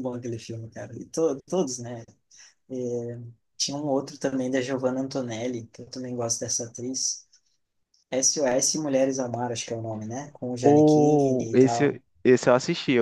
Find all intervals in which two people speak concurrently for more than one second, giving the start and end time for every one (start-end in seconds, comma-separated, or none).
10.6-12.0